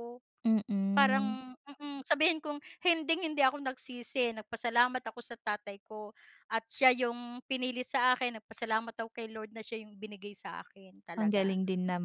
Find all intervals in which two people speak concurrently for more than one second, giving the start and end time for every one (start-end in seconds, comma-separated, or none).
none